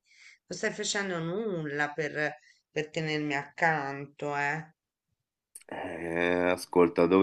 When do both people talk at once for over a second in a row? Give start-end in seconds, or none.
none